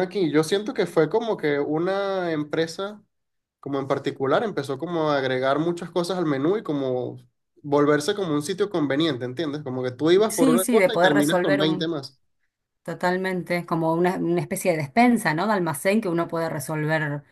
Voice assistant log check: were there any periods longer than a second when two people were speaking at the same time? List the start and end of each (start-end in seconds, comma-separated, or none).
10.3-11.9